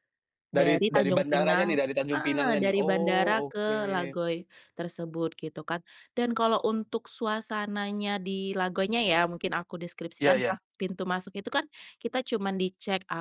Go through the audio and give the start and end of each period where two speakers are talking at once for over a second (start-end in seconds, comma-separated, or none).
0.5-3.7